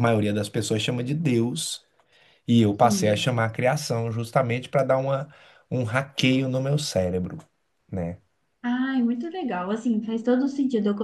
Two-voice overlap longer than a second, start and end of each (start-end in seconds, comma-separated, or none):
none